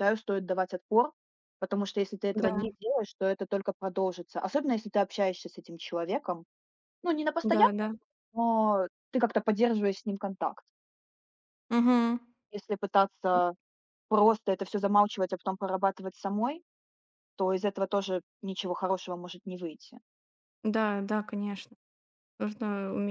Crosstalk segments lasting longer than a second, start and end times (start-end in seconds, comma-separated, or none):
none